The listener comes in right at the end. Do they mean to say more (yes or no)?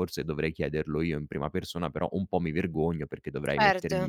no